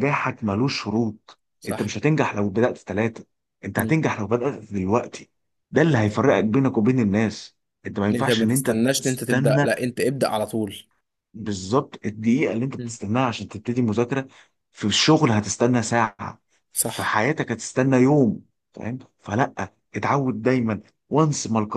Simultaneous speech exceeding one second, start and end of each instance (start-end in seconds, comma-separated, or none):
8.1-9.7